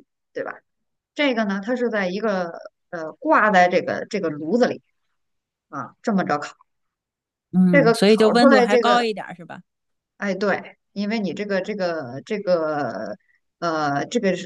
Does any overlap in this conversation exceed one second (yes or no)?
yes